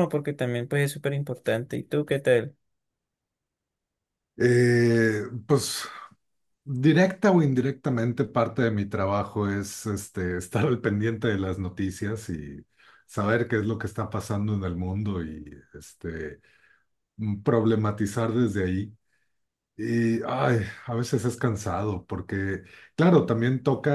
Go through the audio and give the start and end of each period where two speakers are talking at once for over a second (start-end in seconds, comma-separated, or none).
none